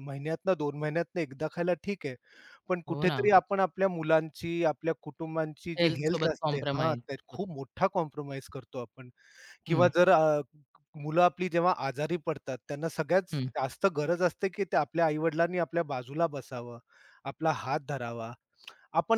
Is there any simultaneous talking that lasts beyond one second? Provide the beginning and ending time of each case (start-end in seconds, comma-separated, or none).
5.8-7.5